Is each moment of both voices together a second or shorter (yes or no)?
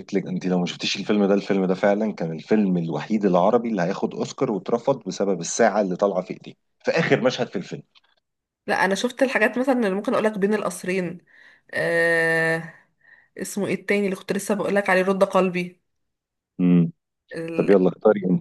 yes